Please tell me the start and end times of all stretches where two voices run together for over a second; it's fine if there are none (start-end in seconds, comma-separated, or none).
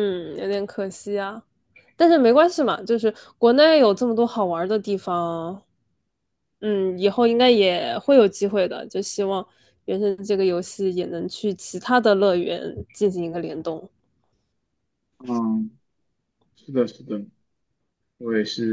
none